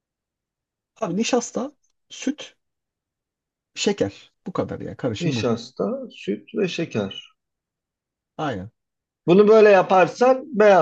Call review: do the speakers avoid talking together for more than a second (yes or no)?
yes